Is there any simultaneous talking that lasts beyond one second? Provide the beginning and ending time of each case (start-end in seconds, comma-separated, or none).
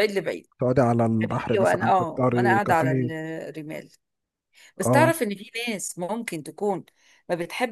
1.2-2.9